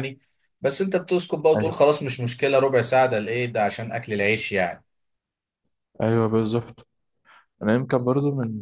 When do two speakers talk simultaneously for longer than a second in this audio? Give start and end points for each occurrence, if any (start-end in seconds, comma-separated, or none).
none